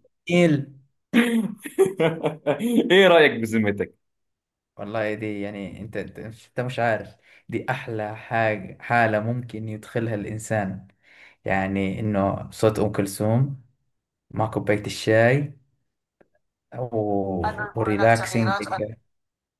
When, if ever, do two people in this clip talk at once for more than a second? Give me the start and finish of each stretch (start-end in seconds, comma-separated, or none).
17.4-18.7